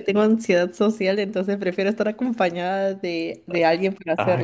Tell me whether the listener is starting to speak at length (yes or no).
yes